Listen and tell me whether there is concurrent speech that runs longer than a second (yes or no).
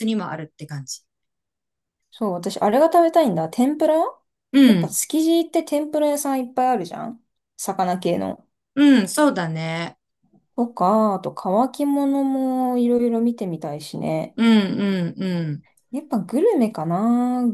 no